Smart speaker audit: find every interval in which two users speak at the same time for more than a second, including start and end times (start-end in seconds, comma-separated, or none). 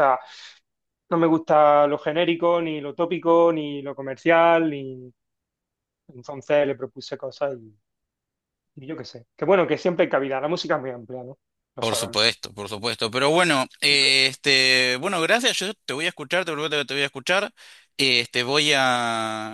none